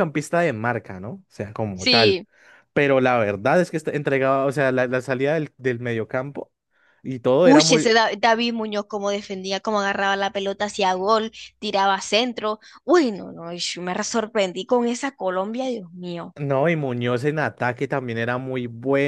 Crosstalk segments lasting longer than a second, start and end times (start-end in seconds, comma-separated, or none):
none